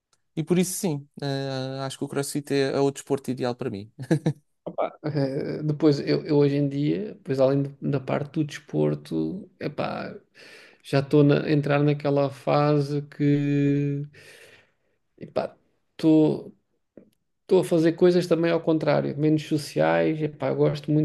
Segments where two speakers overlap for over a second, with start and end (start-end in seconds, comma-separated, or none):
none